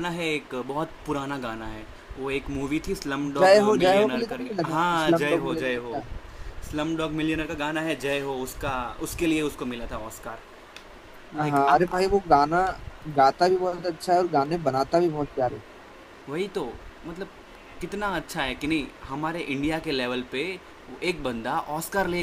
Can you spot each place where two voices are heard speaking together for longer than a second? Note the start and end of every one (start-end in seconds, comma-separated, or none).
3.4-6.0